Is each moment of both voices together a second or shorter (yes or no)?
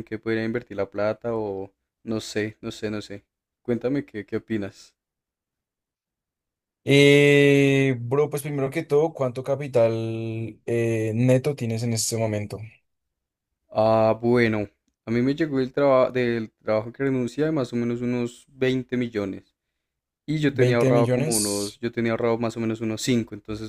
no